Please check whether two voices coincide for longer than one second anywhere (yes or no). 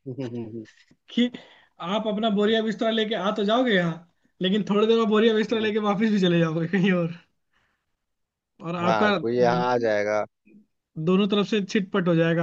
no